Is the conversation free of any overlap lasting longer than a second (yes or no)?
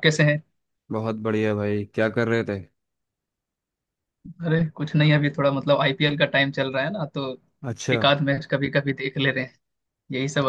yes